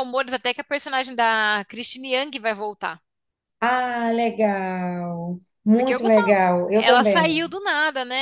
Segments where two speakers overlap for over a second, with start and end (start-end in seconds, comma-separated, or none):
5.7-7.5